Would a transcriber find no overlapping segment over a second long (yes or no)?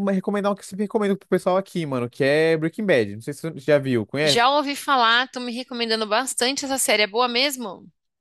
yes